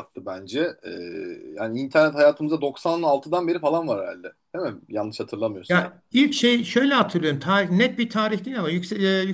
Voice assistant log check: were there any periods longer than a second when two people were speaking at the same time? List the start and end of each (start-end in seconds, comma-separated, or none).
none